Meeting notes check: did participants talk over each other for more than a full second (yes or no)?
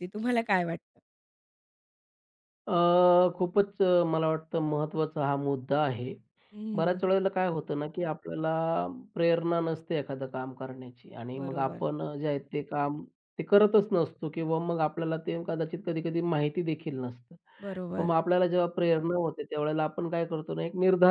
no